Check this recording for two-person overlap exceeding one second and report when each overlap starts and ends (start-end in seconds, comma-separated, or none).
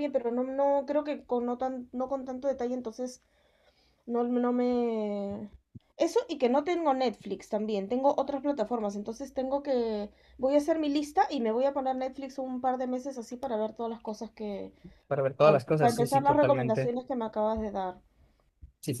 15.4-16.9